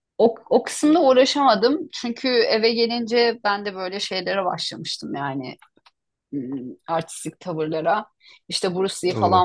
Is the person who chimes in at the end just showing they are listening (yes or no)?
yes